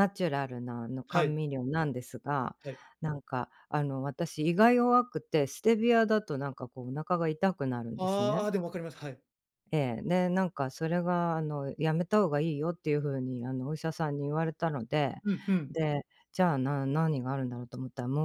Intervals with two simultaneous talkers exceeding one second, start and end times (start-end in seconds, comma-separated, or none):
none